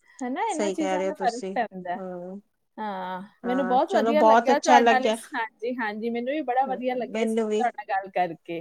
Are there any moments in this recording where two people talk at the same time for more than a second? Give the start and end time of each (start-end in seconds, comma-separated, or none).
3.5-5.1